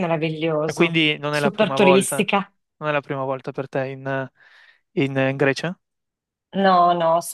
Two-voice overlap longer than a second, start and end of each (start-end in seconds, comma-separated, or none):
0.7-2.3